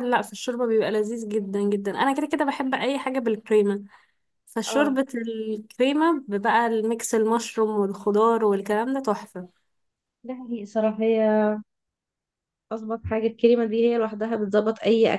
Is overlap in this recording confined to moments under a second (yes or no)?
yes